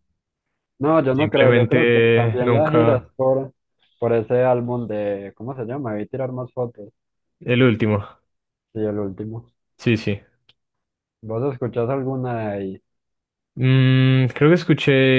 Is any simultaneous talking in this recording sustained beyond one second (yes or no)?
yes